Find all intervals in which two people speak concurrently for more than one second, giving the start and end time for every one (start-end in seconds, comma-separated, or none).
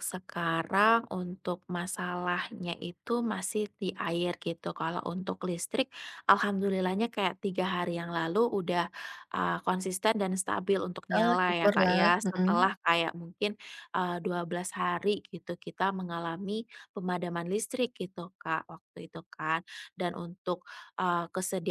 11.2-12.7